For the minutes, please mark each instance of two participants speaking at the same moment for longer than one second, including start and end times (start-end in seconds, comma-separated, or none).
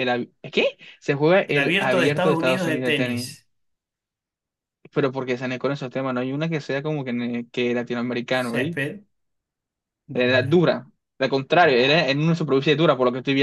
1.5-3.3